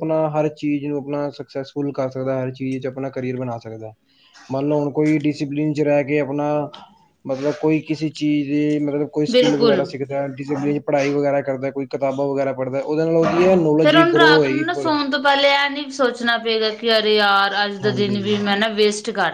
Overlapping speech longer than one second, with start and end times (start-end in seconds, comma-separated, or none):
none